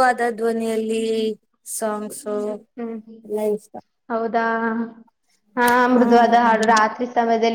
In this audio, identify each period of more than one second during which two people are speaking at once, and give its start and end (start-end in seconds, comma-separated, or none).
none